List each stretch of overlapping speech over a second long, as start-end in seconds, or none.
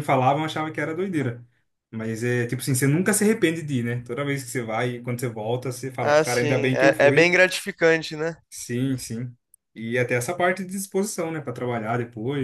6.0-7.3